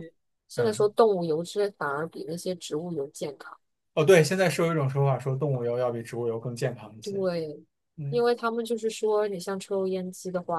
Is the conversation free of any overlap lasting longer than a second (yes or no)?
yes